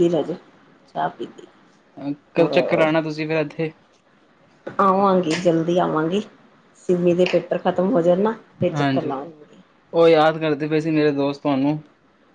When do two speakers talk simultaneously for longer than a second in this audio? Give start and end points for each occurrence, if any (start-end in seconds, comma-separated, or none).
none